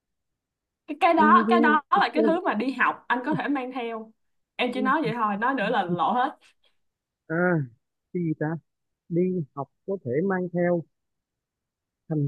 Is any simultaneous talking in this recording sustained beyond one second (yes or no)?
no